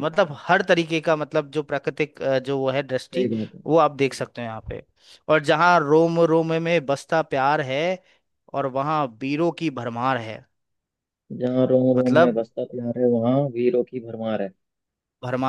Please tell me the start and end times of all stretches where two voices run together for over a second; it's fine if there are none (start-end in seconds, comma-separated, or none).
none